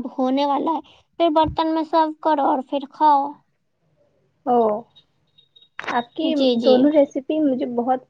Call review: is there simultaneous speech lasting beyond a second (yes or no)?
no